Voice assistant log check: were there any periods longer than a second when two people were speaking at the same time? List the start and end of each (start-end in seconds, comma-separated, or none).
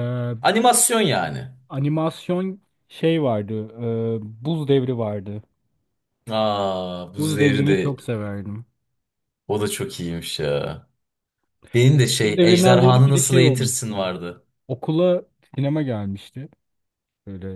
12.2-13.9